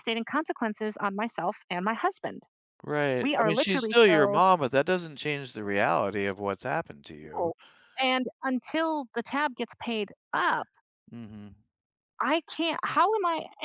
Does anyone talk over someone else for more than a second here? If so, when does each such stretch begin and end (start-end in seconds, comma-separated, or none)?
3.2-4.4